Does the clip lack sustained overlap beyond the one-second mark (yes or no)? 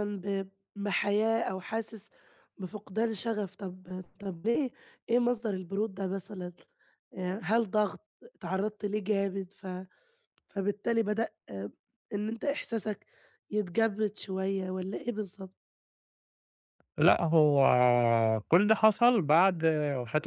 yes